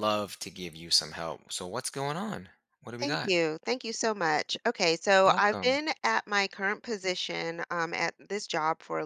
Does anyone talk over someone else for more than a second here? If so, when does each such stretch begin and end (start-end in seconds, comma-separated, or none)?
none